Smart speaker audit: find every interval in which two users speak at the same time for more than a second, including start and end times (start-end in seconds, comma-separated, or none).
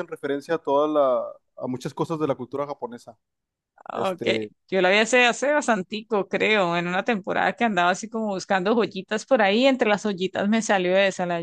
none